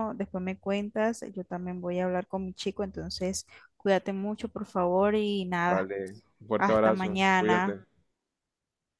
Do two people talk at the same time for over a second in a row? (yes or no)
yes